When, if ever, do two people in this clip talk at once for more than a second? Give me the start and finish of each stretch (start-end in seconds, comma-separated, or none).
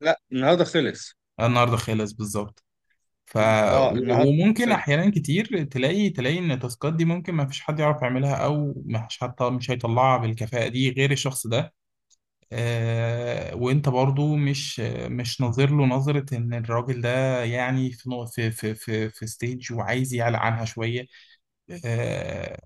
3.6-5.0